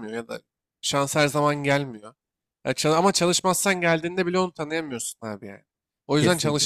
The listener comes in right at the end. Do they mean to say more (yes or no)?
no